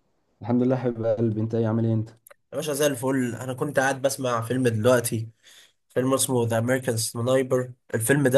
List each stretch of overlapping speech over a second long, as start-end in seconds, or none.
none